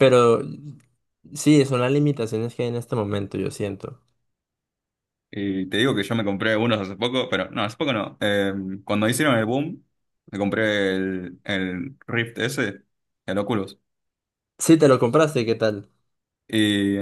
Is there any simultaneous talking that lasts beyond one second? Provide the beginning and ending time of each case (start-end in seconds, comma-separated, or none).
none